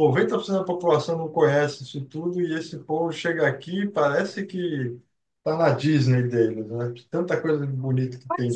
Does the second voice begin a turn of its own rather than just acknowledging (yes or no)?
yes